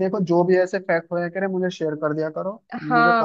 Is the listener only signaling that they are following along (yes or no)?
no